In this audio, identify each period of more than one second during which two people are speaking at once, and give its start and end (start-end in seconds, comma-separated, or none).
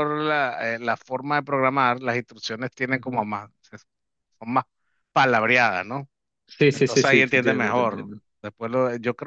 6.7-8.2